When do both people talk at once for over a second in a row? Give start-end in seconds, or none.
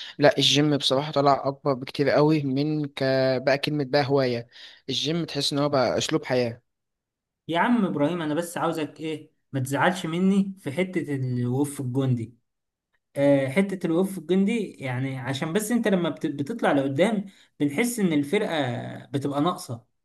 none